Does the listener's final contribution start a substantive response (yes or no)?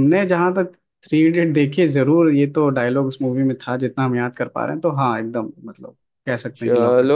yes